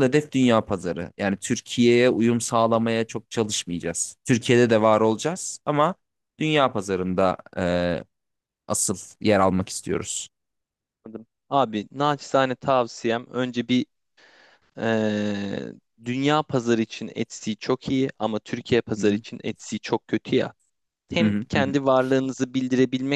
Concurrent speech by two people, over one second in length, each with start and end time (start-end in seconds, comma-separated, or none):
none